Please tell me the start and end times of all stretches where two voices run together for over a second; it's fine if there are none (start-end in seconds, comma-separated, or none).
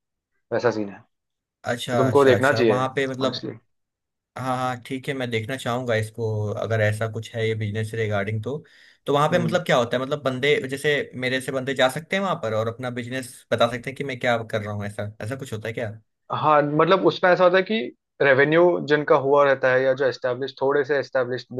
1.7-3.5